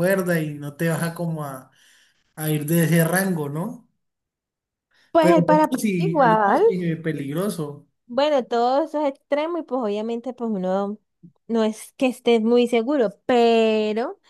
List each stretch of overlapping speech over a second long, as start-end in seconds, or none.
5.2-6.6